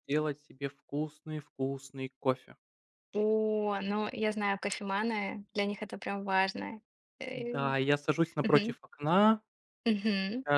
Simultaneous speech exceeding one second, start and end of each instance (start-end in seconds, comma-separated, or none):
none